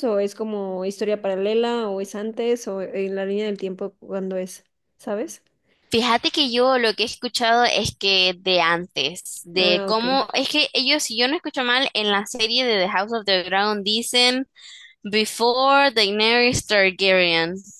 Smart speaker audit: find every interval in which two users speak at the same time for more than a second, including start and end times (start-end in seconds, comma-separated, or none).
none